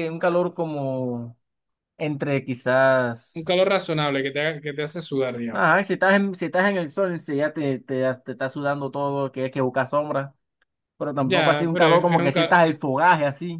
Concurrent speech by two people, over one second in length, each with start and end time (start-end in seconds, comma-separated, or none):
11.2-12.6